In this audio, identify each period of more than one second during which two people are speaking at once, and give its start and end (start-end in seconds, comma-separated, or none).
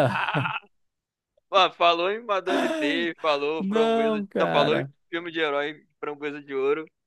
3.6-4.9